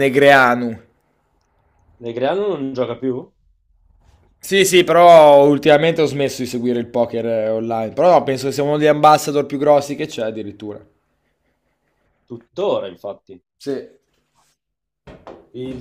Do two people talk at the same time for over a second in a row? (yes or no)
no